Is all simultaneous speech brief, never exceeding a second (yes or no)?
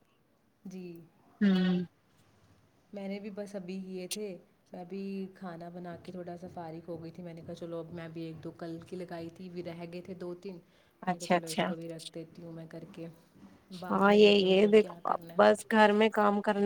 no